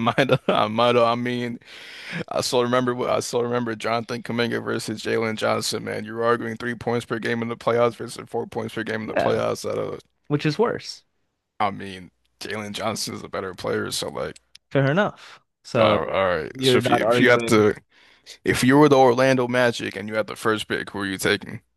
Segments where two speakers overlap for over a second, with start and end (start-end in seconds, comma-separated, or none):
15.8-17.6